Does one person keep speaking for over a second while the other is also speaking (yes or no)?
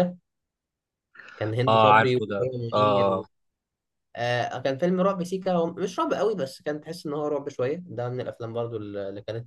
yes